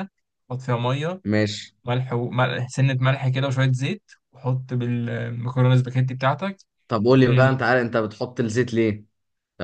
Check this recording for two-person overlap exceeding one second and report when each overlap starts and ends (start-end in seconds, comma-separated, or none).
none